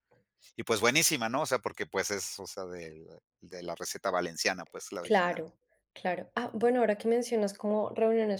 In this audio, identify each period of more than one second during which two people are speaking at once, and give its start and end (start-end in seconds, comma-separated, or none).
none